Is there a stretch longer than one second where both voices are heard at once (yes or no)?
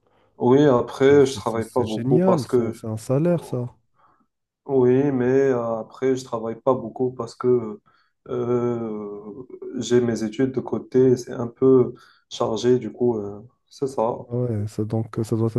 yes